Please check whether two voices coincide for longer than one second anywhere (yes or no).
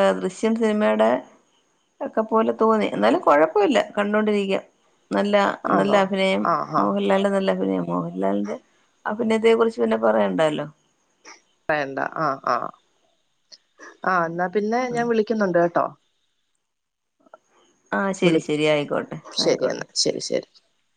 yes